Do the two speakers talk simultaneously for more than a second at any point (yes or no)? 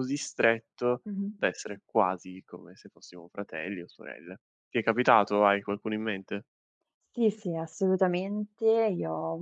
no